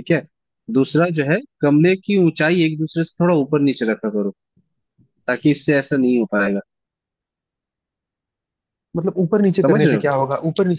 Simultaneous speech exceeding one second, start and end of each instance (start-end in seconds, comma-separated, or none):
none